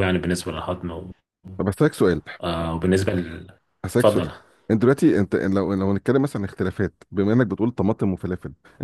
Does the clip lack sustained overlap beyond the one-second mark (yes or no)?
yes